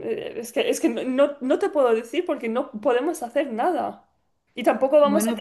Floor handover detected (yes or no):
no